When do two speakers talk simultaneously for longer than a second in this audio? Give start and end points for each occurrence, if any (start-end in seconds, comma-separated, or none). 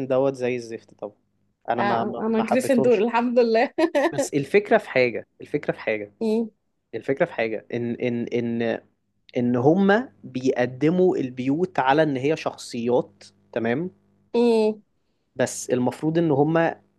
1.8-3.0